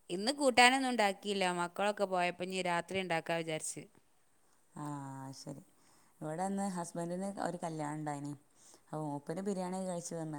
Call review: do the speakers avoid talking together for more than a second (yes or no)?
yes